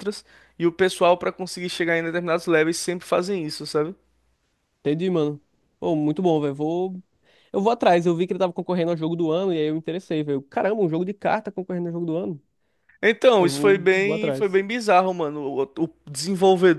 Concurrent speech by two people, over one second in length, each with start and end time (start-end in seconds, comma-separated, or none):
13.4-14.6